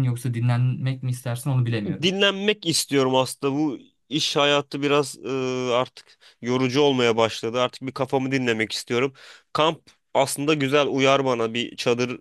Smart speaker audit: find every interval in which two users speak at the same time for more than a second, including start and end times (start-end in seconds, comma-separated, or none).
none